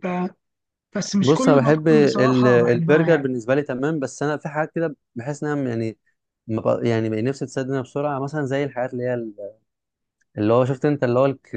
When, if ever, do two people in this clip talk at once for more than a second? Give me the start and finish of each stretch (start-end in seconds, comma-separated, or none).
1.2-3.3